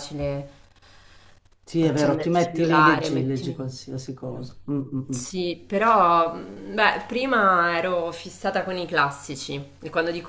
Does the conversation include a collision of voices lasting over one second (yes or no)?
yes